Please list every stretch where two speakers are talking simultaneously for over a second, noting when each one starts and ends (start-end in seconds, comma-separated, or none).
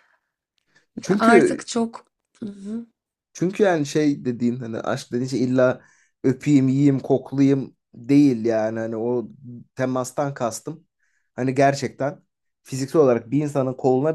none